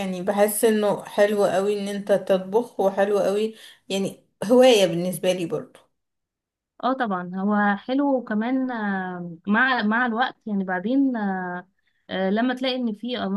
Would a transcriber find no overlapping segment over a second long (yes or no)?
yes